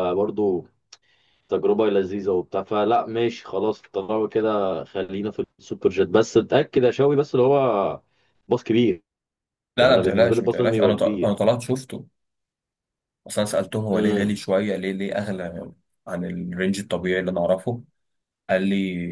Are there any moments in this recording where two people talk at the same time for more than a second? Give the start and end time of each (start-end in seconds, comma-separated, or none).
9.8-11.3